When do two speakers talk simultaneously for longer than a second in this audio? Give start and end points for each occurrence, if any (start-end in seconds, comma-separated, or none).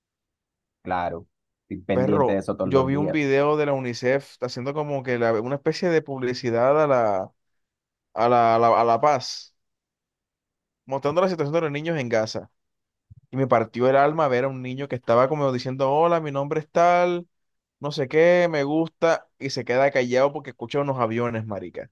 1.9-3.2